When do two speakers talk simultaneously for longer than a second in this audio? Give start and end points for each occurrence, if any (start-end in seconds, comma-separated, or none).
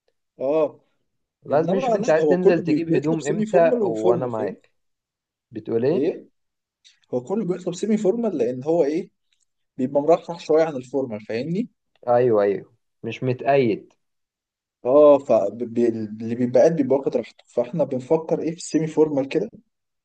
1.5-4.6